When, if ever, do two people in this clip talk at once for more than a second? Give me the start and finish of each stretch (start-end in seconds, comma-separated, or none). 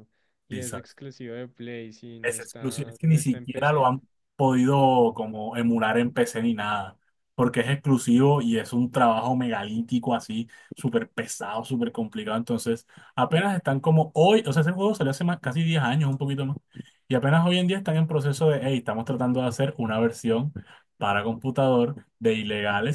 2.2-3.9